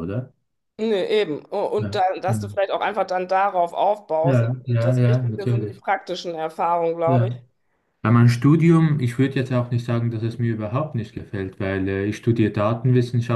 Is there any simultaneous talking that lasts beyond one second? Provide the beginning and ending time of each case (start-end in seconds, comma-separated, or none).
4.2-5.8